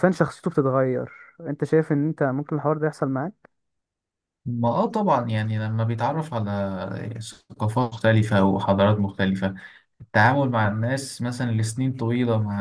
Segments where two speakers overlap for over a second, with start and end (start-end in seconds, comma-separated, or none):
none